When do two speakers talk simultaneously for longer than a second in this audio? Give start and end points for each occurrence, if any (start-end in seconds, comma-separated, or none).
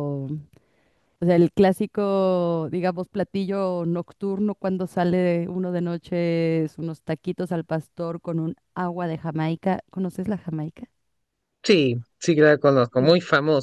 none